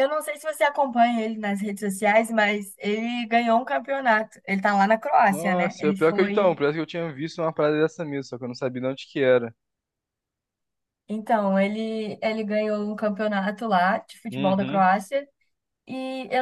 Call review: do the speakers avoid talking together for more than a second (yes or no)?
no